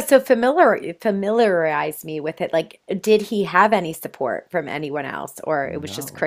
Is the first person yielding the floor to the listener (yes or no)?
yes